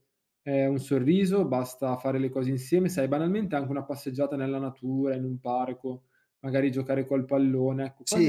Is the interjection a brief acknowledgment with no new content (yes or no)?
no